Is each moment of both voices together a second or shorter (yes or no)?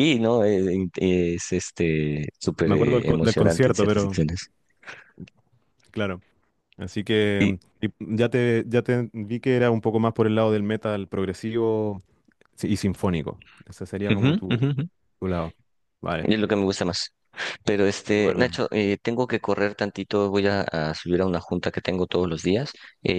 no